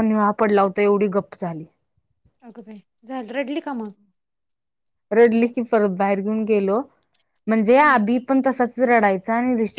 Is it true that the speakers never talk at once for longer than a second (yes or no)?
yes